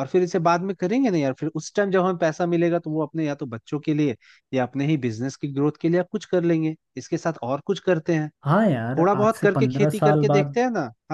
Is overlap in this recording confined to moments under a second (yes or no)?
no